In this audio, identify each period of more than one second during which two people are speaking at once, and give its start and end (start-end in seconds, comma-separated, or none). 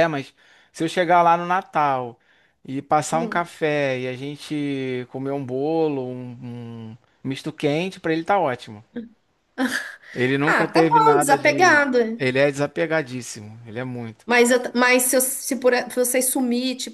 10.5-12.2